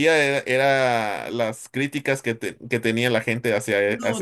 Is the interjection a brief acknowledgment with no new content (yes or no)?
no